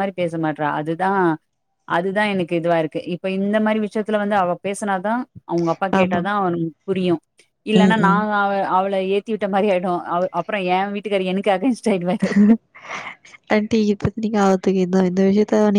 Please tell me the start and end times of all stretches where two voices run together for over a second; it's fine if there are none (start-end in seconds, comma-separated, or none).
none